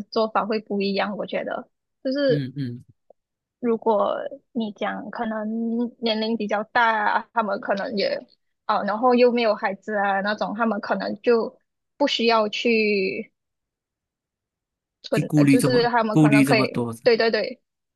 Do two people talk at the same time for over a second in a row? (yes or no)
yes